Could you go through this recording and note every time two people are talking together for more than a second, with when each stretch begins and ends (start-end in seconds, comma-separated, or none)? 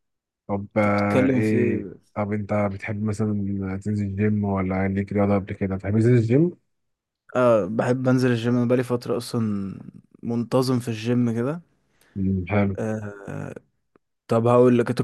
0.8-2.0